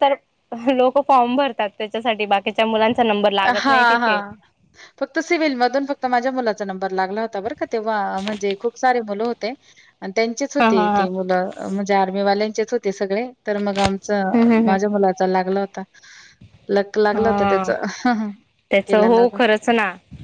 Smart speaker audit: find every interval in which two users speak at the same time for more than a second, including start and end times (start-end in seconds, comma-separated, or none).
none